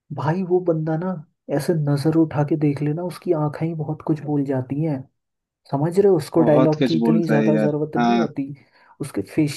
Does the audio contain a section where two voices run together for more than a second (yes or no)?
yes